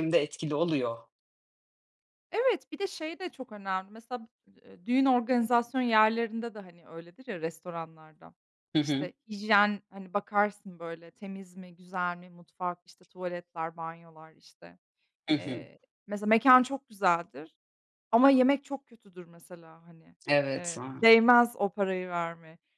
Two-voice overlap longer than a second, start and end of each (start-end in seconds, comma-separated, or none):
none